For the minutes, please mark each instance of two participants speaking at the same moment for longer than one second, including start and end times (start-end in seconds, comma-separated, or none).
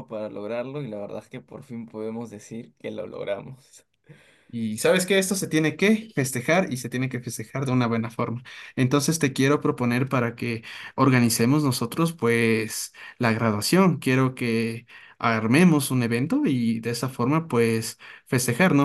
none